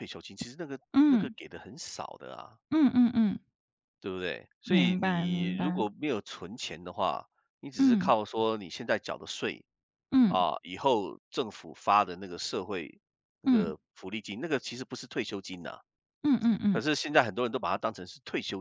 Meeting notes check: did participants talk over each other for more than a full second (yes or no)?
yes